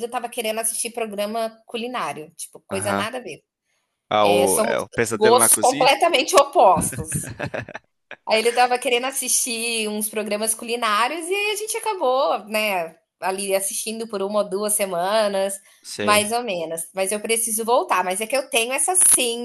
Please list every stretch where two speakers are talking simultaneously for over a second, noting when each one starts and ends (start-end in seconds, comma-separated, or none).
4.2-5.9